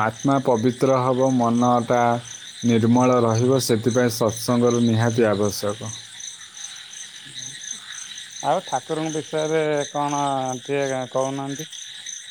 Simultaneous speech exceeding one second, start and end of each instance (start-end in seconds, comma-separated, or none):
none